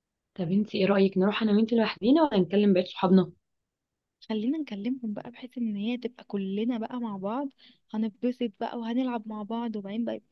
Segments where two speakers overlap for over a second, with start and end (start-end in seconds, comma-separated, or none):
none